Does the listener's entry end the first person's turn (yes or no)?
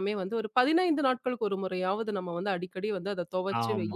yes